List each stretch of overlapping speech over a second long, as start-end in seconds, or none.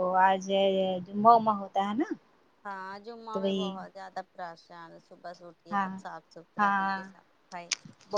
none